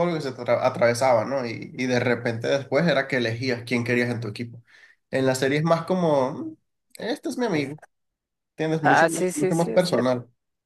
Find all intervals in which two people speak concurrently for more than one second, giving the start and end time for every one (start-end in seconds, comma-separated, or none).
8.8-10.1